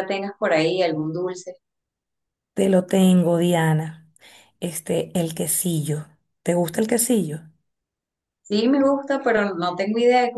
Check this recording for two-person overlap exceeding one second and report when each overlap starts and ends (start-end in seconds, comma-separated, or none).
none